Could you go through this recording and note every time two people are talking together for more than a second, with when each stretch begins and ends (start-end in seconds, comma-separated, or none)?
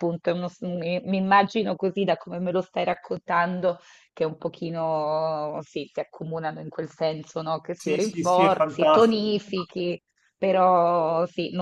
7.8-9.3